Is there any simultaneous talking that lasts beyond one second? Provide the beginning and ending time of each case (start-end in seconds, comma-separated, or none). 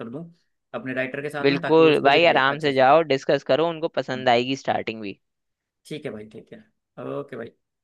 1.4-2.8